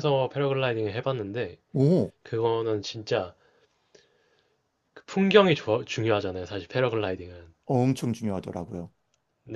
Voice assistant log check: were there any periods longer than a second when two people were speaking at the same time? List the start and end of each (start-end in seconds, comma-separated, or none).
none